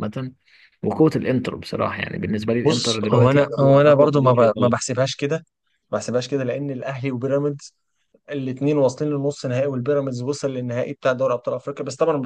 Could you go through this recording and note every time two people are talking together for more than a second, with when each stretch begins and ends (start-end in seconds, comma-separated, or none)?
2.6-4.8